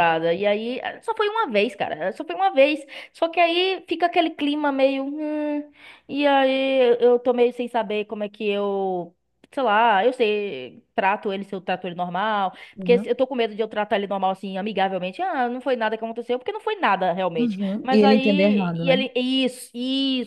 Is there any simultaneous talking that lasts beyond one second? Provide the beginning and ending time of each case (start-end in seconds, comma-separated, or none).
17.4-19.0